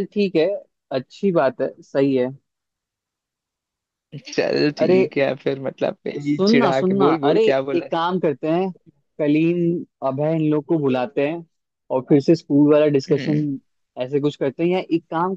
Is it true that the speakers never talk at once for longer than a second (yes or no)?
no